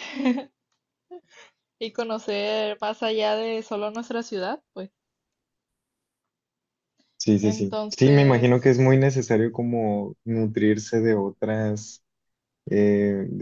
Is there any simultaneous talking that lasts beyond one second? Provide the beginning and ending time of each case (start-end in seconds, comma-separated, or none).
7.4-8.7